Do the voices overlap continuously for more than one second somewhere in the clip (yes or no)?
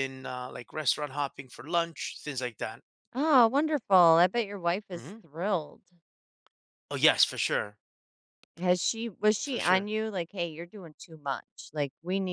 no